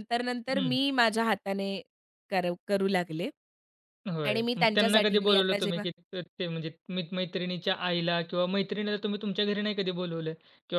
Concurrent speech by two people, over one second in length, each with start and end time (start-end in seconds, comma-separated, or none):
4.2-5.8